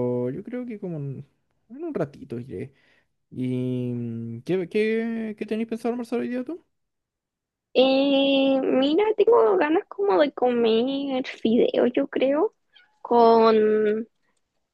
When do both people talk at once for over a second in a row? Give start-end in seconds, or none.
none